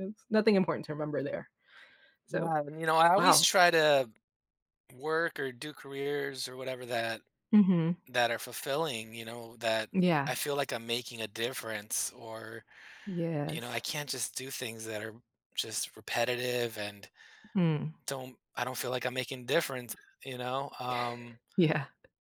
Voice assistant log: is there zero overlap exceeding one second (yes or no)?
yes